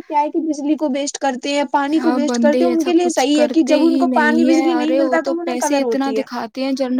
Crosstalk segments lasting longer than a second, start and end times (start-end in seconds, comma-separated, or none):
3.2-6.2